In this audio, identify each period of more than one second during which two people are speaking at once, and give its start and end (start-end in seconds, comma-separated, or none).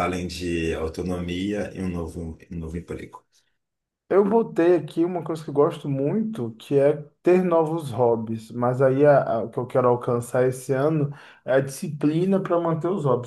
none